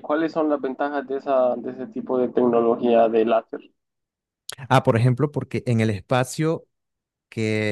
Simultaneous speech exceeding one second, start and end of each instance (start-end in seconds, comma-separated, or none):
none